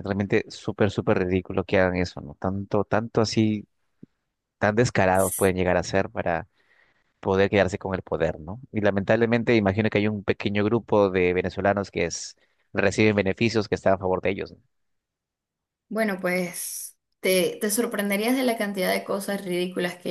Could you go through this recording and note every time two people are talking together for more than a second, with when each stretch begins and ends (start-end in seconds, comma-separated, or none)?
none